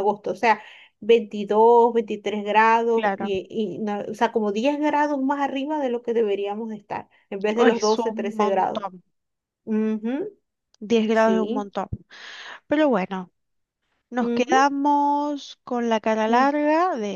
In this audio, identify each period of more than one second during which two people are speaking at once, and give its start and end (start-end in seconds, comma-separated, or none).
7.6-8.8